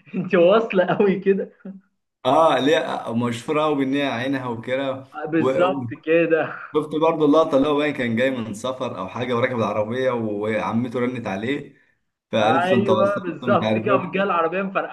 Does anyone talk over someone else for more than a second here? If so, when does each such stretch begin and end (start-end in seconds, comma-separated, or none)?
12.4-14.4